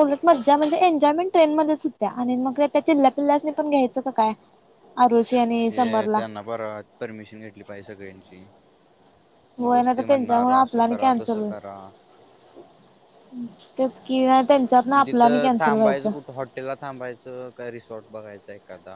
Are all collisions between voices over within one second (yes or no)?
no